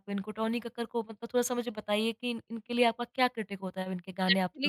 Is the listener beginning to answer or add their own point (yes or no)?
yes